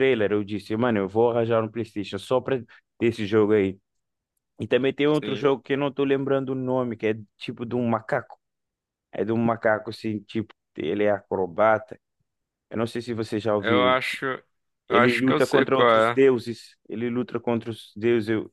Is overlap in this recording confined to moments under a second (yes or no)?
no